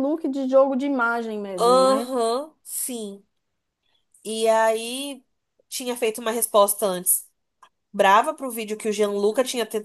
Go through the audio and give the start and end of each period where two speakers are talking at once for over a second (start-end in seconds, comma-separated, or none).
none